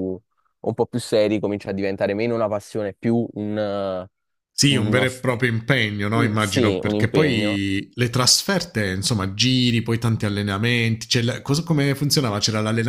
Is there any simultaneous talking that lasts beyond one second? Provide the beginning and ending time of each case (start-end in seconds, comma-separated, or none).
6.1-7.6